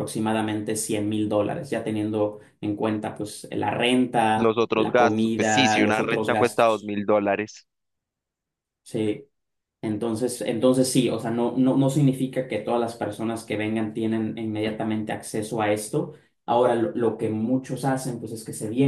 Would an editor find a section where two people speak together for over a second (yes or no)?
yes